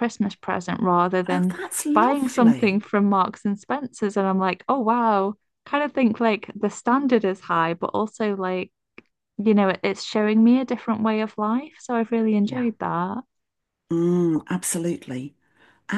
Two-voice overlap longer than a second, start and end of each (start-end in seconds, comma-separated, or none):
1.3-2.8